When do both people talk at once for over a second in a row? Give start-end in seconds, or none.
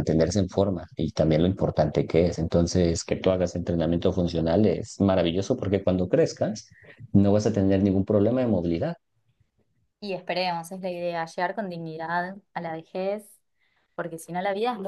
none